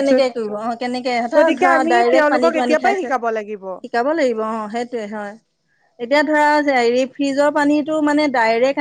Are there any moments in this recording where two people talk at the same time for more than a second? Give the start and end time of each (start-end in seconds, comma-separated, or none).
1.4-3.2